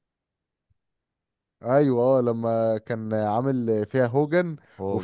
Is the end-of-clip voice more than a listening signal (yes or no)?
no